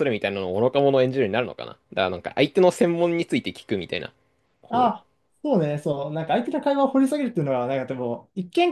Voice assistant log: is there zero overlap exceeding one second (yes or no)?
yes